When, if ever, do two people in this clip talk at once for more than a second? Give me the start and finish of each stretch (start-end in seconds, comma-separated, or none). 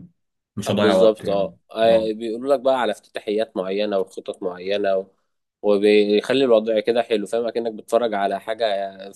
0.7-2.1